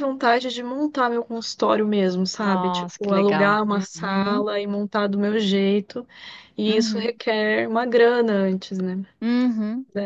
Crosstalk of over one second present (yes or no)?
yes